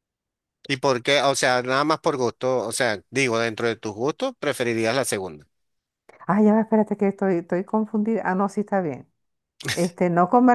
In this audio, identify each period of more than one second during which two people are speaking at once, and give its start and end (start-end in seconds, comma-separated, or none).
none